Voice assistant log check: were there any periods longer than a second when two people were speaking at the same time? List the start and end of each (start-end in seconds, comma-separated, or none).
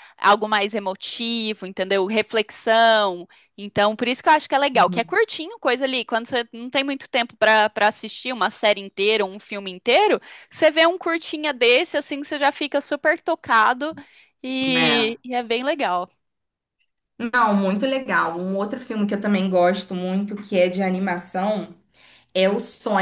none